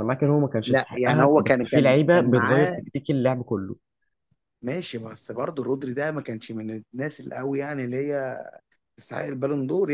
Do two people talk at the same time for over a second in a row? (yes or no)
yes